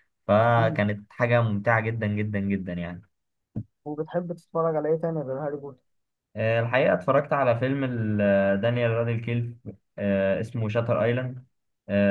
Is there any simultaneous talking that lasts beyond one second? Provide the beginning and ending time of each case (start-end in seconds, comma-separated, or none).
none